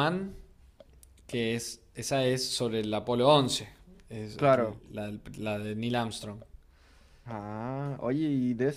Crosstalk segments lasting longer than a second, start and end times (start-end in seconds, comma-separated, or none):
none